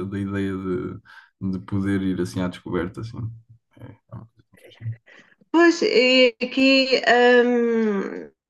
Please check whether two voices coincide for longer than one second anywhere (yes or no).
no